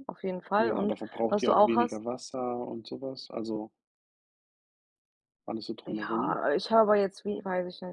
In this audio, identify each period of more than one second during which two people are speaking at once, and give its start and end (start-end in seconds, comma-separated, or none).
0.6-2.0